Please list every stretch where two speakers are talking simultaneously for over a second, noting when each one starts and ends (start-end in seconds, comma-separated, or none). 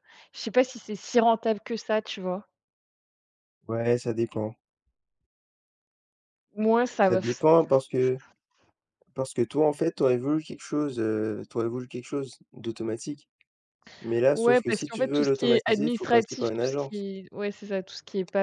14.3-17.1